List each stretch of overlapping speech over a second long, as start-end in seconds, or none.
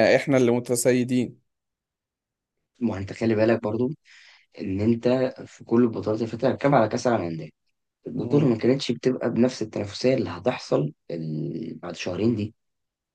none